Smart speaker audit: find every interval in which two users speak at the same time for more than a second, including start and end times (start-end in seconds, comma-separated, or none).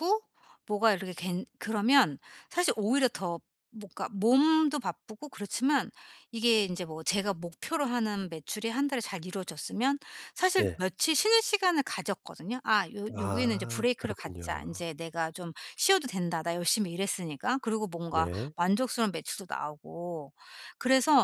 13.2-14.9